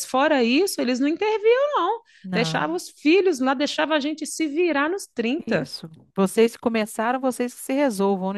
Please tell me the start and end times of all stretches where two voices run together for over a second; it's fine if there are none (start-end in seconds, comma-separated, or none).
none